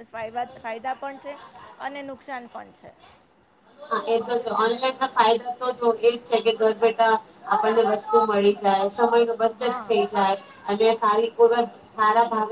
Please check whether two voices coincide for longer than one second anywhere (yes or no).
no